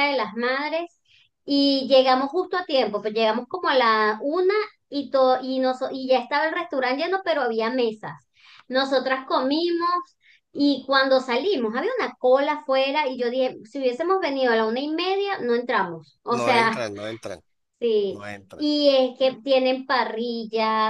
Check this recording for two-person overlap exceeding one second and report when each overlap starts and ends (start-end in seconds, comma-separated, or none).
none